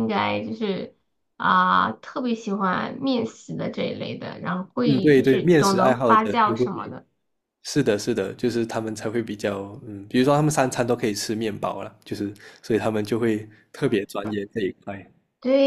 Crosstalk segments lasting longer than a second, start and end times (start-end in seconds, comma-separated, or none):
4.8-6.7